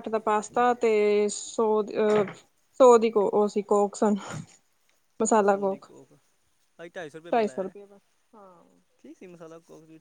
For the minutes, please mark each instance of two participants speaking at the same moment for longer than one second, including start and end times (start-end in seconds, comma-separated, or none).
none